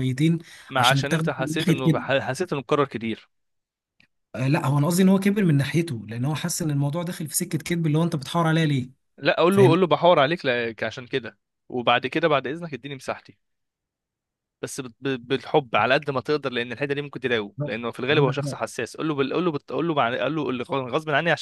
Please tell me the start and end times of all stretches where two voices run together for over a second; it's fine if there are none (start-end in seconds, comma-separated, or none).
0.8-2.0